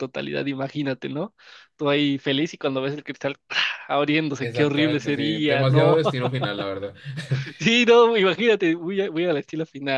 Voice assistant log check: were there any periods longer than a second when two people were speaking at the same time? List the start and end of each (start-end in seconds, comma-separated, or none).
4.4-6.0